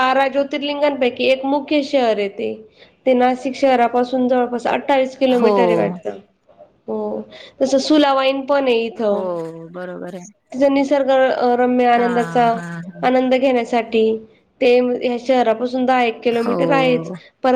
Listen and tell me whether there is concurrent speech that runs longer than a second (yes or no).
no